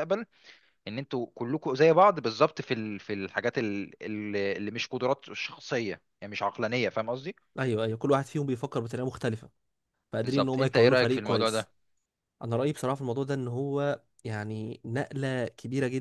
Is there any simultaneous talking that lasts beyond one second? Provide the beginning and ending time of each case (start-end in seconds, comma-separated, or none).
10.2-11.7